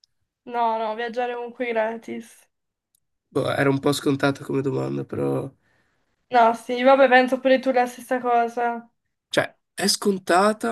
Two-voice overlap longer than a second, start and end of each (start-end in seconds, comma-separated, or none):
none